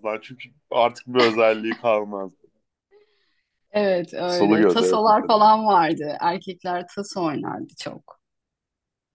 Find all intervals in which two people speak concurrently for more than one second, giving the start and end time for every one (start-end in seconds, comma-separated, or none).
4.2-5.5